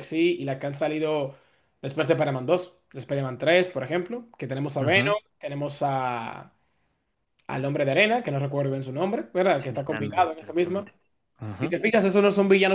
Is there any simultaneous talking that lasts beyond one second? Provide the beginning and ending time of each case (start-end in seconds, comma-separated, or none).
9.6-10.9